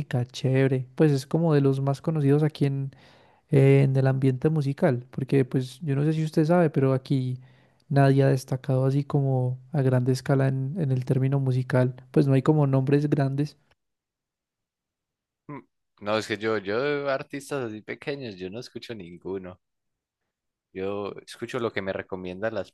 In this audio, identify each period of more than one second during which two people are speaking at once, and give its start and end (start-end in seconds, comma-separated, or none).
none